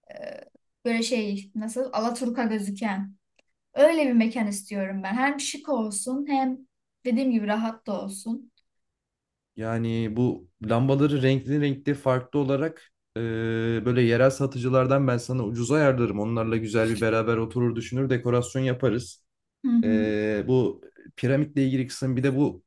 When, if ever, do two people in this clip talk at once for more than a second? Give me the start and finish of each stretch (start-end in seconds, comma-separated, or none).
none